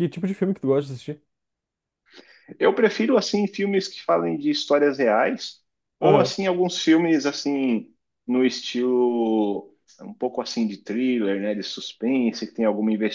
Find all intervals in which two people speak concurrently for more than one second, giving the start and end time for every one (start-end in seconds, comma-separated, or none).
none